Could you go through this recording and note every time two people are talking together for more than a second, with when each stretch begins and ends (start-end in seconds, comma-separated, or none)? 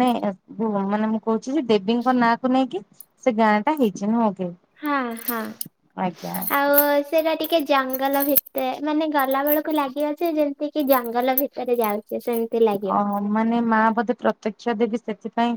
none